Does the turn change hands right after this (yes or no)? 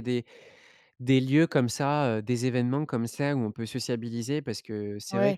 yes